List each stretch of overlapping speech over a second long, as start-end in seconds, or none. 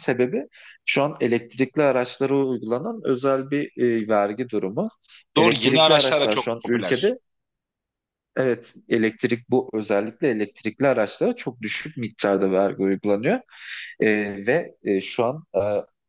5.4-7.2